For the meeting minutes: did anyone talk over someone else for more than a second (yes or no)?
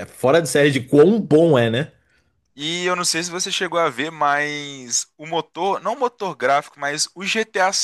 no